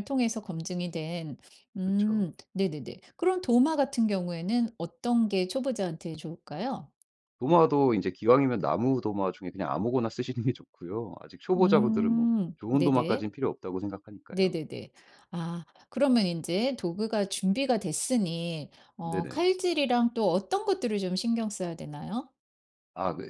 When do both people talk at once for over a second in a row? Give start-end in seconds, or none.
11.6-13.3